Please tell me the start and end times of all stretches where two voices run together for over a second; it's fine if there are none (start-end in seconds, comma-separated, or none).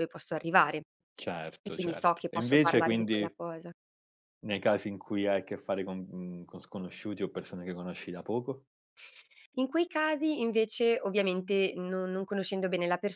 1.6-3.3